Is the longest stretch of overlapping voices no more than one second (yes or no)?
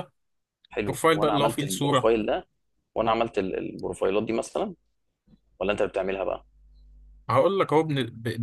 no